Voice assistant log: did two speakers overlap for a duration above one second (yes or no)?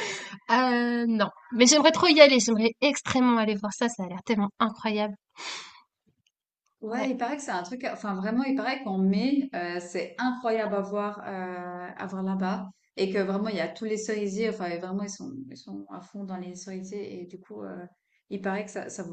no